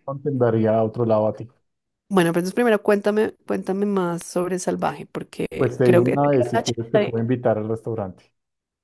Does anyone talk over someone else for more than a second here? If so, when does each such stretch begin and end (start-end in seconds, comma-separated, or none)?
5.8-7.2